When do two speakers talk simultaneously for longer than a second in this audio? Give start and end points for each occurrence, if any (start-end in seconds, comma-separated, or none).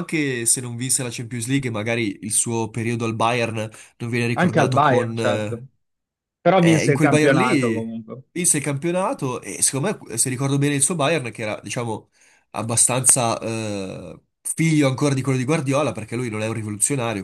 4.3-5.6, 6.5-7.8